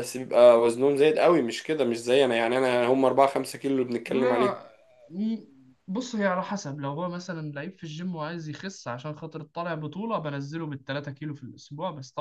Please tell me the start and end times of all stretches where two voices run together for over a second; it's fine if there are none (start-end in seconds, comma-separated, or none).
none